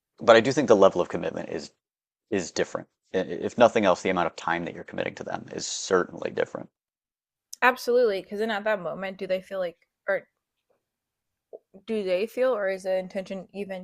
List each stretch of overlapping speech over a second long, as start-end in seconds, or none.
none